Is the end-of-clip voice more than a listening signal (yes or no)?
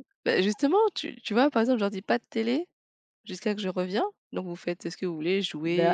yes